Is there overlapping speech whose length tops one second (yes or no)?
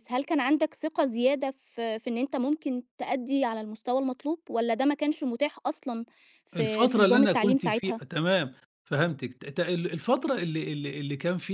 yes